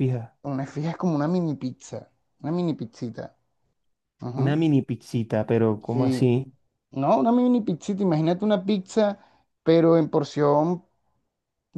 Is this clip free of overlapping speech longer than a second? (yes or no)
yes